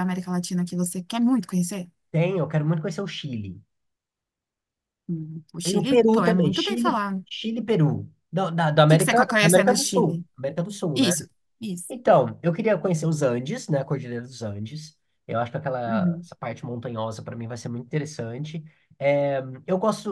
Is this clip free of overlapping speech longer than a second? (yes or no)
no